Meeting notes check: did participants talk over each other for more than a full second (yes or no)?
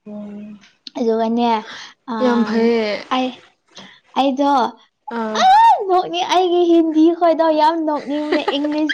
no